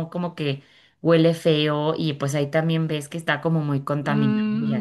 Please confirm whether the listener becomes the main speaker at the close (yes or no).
yes